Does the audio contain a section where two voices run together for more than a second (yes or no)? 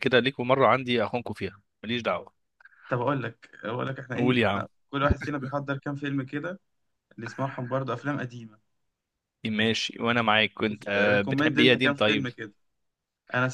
yes